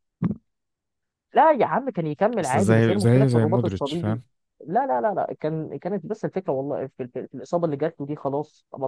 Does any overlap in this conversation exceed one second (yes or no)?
yes